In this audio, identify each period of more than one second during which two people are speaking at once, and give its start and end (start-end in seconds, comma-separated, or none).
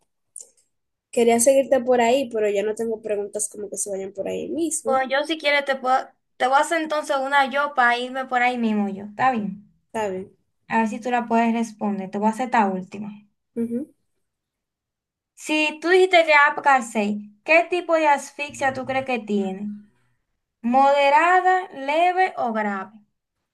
none